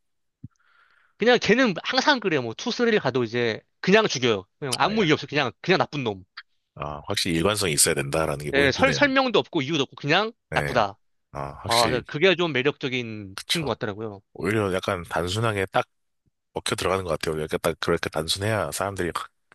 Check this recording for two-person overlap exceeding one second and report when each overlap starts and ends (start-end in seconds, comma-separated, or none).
none